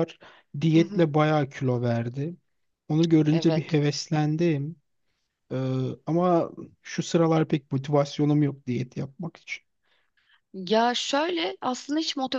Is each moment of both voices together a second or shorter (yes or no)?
yes